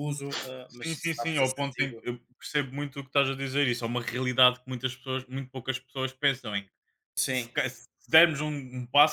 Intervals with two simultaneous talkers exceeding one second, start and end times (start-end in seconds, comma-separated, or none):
0.7-2.1